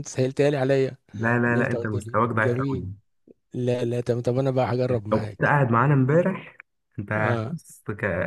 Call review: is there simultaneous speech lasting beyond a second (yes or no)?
yes